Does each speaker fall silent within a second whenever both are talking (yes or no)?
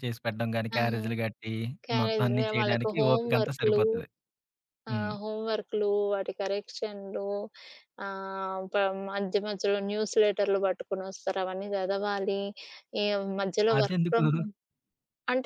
no